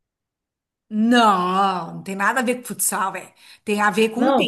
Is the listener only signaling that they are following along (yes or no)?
no